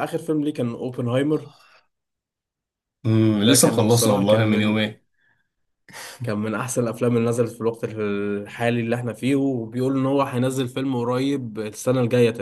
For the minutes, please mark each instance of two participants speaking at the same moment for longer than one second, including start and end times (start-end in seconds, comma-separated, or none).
3.3-4.8